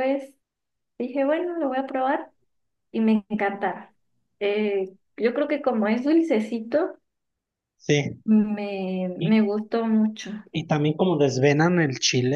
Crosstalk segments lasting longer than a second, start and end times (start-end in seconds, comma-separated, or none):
none